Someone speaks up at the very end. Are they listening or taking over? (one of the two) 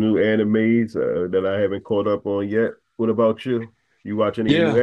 taking over